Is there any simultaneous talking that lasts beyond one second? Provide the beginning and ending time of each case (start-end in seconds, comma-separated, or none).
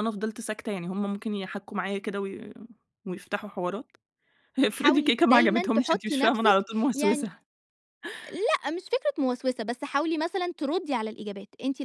4.7-7.3